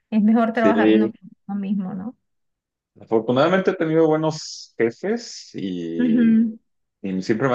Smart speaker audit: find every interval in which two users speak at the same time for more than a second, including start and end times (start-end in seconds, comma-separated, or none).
none